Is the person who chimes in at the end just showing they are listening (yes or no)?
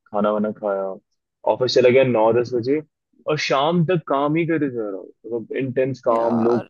no